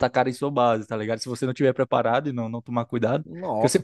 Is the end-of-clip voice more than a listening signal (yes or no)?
no